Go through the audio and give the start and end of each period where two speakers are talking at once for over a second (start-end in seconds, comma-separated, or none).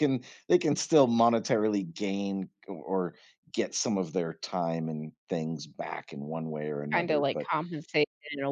none